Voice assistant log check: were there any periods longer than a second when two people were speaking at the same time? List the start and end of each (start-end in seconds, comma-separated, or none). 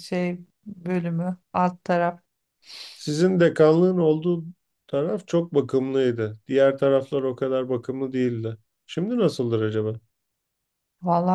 none